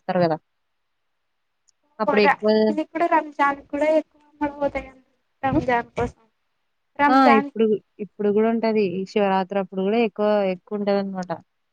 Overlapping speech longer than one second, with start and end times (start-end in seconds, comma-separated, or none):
none